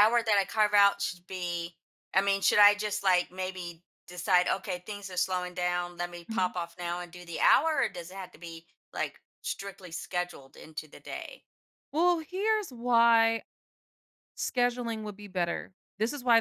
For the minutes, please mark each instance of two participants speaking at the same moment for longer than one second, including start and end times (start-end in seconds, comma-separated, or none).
none